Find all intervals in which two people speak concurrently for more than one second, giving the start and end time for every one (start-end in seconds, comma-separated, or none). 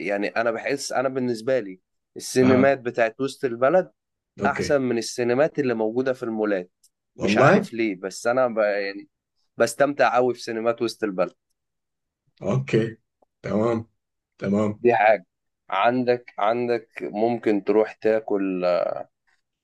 none